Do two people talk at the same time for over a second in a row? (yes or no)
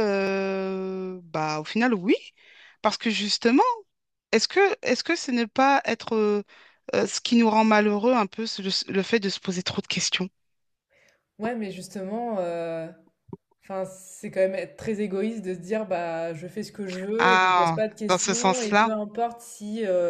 yes